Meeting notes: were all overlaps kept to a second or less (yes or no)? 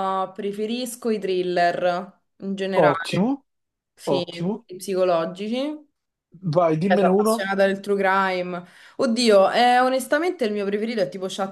yes